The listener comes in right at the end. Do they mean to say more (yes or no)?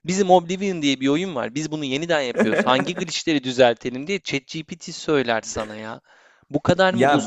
yes